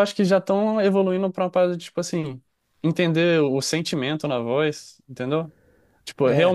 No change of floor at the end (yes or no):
yes